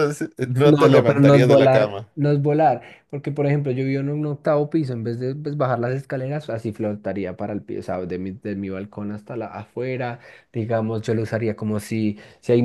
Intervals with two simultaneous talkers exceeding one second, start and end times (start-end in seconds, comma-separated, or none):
0.6-2.1